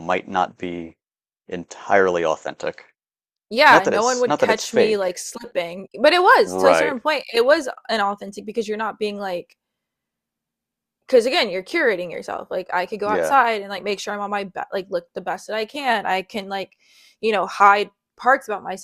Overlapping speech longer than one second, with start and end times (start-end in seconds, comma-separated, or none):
3.7-5.2